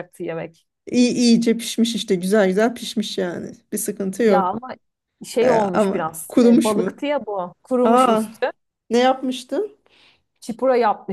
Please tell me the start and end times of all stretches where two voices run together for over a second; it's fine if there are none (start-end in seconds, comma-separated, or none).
5.4-7.0